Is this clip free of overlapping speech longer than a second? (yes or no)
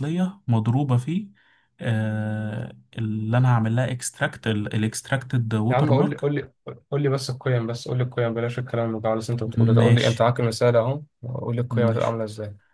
yes